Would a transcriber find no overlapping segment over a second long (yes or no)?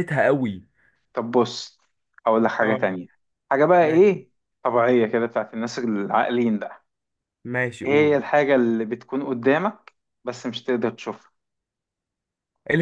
yes